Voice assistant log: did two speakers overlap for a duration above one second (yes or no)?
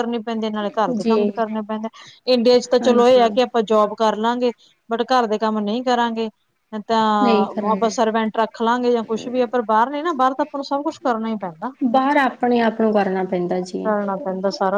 no